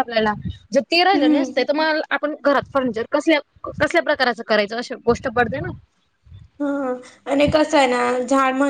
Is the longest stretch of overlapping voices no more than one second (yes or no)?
yes